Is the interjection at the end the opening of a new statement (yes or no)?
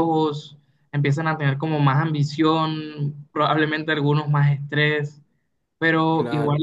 no